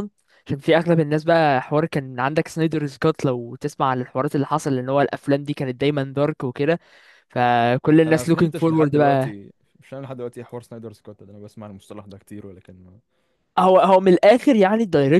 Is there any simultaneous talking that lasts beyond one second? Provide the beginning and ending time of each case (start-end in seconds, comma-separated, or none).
8.1-9.4